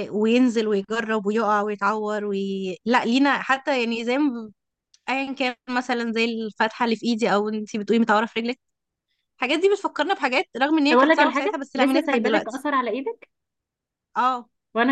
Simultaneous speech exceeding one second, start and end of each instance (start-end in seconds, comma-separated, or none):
10.9-12.6